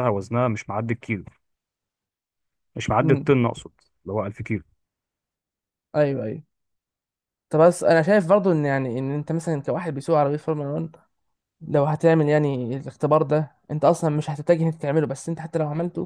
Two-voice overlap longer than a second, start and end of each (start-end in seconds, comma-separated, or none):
none